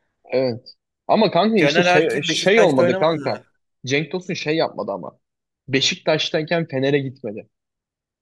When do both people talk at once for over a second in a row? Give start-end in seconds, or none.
1.6-3.3